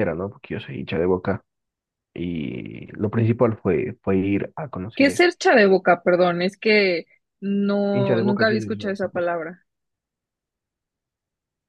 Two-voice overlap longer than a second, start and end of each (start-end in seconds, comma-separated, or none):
7.9-9.3